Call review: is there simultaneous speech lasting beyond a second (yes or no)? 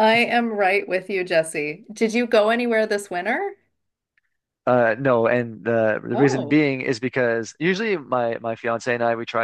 no